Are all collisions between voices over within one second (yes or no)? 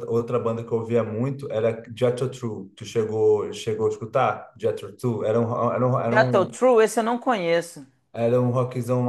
yes